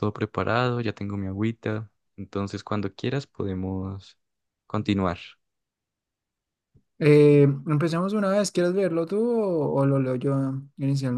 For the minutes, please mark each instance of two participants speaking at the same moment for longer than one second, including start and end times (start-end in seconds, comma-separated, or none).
none